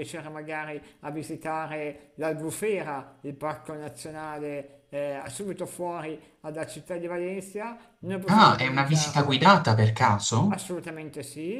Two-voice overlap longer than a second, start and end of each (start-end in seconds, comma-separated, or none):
8.3-9.6